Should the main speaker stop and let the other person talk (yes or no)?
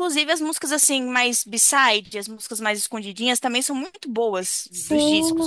yes